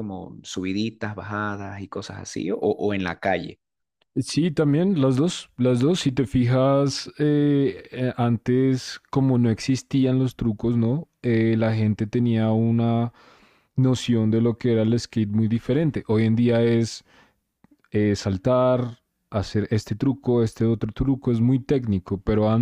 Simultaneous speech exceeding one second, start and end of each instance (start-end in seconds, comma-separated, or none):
none